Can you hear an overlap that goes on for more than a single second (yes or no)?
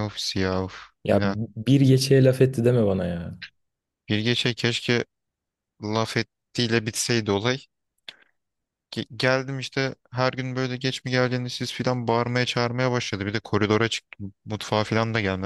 no